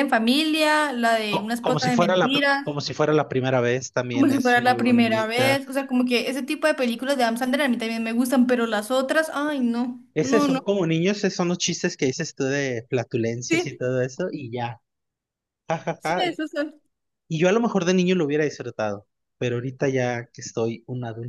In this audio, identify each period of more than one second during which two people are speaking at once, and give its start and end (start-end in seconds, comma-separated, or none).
1.3-2.7, 4.1-5.6